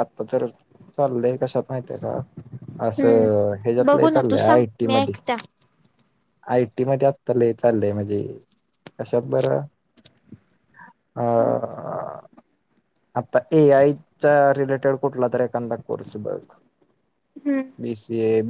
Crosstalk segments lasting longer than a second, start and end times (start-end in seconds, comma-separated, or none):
3.0-5.2